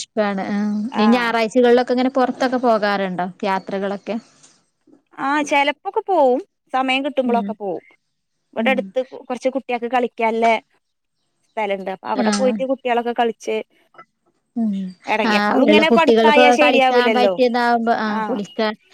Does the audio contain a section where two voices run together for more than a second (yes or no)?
yes